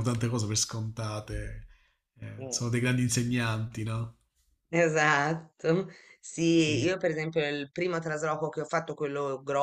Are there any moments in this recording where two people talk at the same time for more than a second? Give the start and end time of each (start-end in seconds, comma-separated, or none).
none